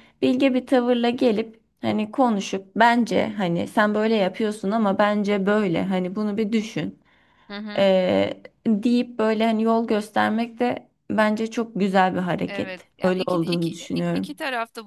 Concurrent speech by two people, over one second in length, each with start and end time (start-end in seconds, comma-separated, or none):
12.5-14.3